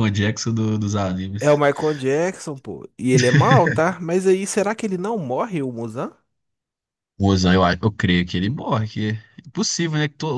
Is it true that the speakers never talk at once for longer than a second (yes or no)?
yes